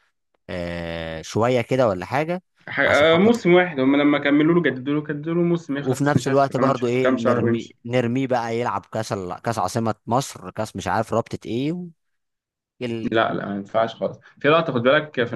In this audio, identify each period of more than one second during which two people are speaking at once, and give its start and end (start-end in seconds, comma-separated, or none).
5.8-7.8